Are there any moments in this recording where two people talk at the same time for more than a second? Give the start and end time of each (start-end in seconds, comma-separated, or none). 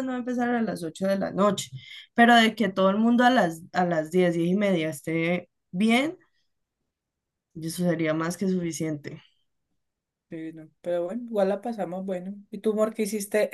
none